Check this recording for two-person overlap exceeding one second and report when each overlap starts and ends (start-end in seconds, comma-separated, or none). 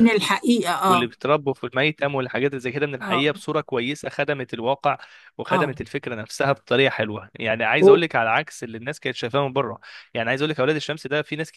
none